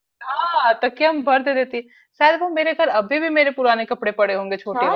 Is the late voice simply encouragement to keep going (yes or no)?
no